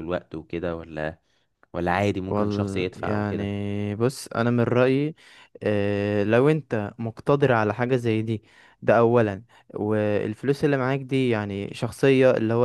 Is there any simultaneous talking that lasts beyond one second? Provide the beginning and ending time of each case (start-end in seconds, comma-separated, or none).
2.3-3.5